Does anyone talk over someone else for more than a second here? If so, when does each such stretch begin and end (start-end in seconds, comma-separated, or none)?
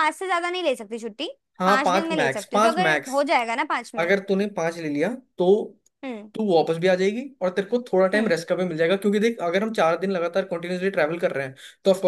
1.6-3.1